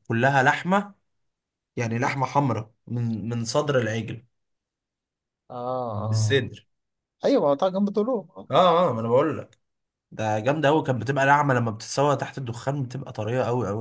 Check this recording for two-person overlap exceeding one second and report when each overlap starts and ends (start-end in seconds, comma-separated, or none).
none